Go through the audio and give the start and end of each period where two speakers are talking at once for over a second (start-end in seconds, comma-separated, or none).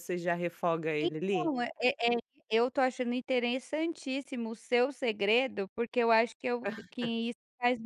none